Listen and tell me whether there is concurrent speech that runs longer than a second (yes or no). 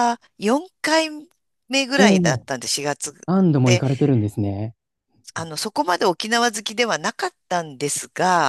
no